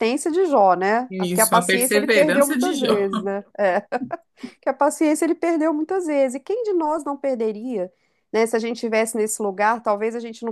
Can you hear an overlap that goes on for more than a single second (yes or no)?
yes